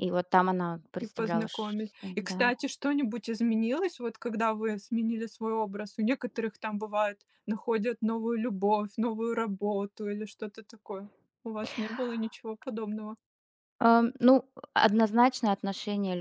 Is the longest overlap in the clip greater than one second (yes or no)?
yes